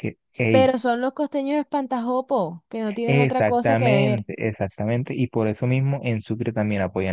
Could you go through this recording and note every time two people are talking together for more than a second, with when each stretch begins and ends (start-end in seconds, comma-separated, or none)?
3.1-4.3